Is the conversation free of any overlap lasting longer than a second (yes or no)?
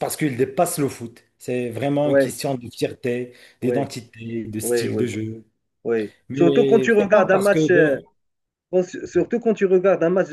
no